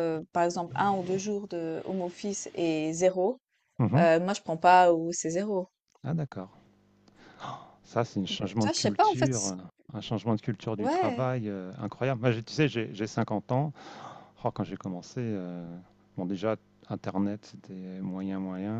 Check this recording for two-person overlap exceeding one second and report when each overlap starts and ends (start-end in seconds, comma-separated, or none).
8.3-9.5